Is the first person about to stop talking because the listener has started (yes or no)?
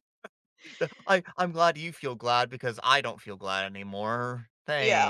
yes